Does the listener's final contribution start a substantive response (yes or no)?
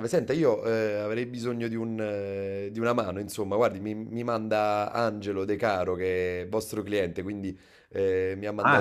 yes